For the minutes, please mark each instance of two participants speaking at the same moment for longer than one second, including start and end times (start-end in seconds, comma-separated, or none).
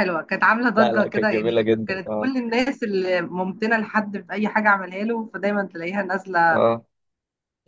0.8-2.3